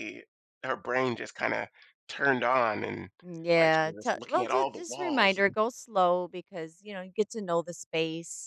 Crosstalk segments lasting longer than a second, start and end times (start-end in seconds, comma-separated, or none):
3.6-5.6